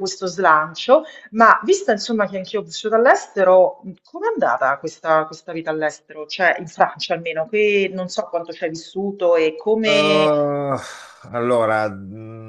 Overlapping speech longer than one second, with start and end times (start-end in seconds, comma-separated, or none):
none